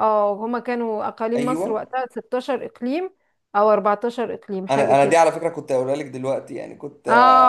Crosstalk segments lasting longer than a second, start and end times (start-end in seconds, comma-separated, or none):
none